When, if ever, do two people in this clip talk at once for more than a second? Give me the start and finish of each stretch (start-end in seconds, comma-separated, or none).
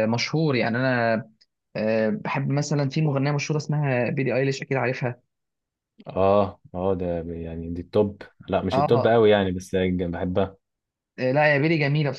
none